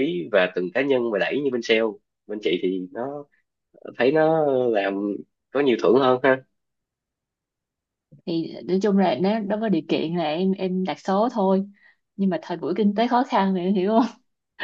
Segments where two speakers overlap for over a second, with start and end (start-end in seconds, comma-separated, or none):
none